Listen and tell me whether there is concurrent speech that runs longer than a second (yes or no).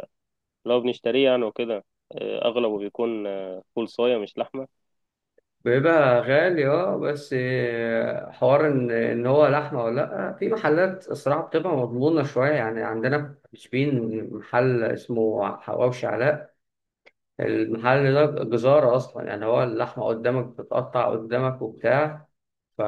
no